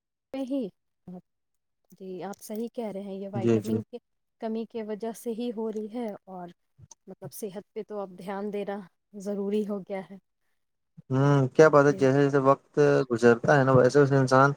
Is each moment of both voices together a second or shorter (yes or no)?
yes